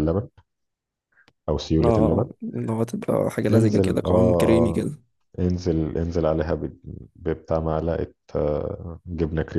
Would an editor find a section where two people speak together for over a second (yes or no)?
yes